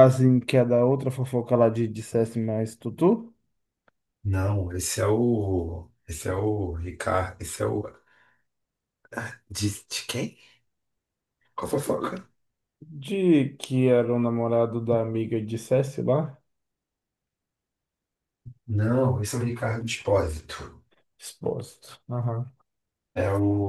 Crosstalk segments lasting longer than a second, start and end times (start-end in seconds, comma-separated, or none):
none